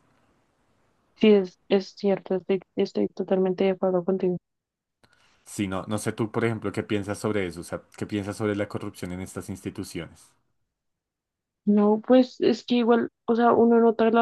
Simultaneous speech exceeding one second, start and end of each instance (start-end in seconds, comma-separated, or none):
none